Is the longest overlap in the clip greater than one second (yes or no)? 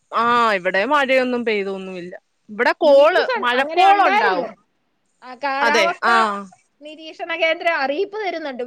yes